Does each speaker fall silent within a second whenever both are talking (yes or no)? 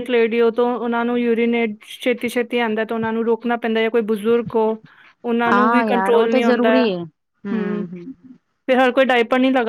no